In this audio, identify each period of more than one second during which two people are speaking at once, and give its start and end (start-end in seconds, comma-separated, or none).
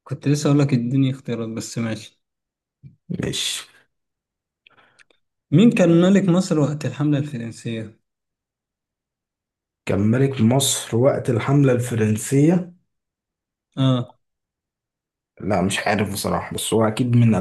none